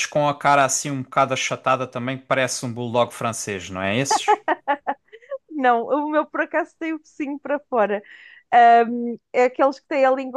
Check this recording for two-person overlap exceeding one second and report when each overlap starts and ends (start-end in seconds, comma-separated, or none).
none